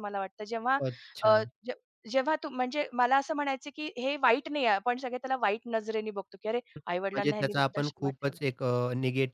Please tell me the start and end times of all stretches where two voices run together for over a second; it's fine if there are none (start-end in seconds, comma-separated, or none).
6.8-8.4